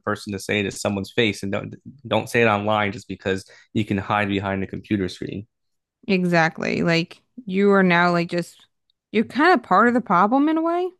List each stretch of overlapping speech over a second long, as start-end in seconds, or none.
none